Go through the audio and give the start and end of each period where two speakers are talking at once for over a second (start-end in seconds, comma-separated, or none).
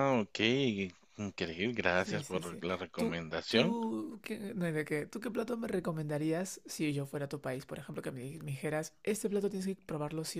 2.0-3.8